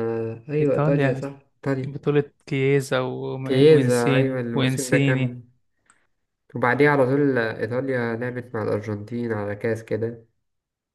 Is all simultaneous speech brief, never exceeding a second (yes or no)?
no